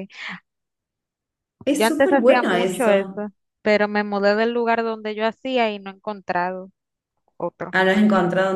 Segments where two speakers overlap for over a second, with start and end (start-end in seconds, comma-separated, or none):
1.7-3.2